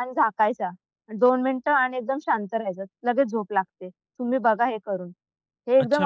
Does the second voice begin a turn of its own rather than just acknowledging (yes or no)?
yes